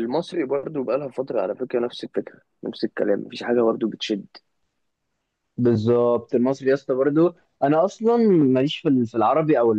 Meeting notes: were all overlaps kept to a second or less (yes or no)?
yes